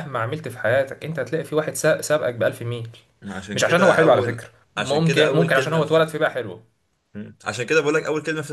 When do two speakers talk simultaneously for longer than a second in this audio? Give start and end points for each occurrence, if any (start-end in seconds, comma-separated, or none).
3.5-6.1